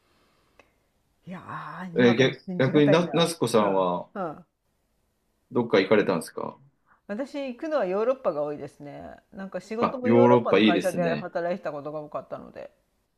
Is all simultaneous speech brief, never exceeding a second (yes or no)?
no